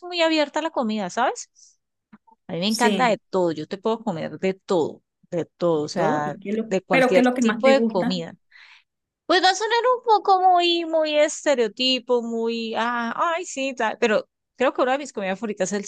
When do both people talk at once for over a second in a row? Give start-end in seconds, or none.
5.7-8.2